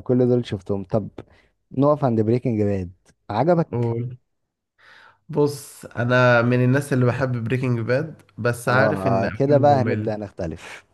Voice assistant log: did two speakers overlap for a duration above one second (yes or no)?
yes